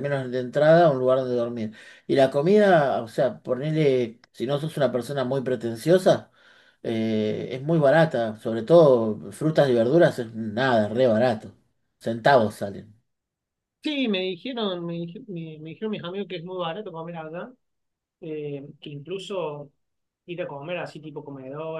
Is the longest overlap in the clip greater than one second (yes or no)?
no